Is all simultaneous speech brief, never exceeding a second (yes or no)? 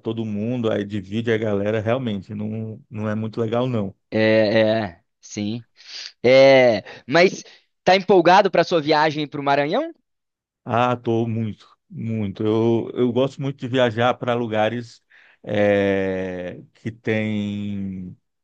yes